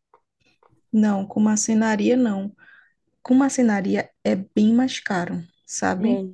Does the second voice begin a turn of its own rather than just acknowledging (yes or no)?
no